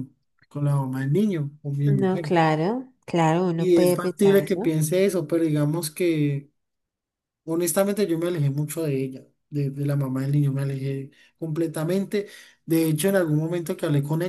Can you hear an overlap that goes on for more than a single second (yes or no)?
yes